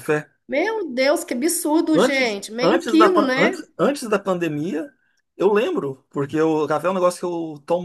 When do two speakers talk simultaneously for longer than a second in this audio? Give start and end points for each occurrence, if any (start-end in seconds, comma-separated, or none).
1.9-3.6